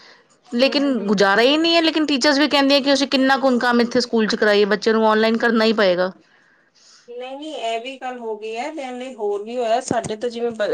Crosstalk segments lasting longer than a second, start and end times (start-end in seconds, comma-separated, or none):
none